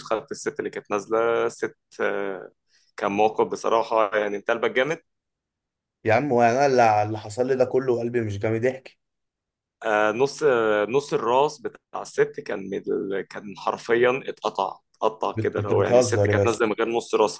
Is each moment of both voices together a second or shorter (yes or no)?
no